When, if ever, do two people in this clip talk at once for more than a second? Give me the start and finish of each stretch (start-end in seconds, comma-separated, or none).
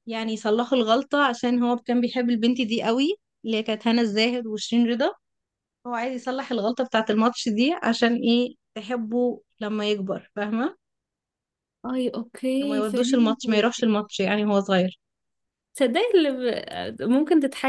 12.6-13.9